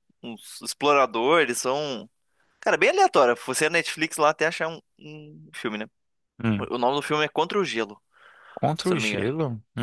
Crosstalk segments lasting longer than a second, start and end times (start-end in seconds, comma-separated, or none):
none